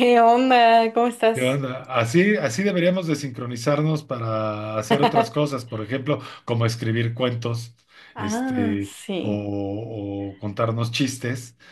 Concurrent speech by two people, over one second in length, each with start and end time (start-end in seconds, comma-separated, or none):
8.2-9.5